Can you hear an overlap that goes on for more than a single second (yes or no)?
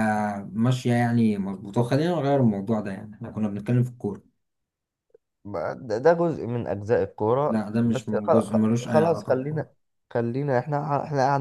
yes